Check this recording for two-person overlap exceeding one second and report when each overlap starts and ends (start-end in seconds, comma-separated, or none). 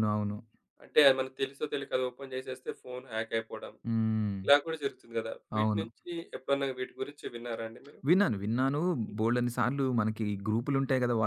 none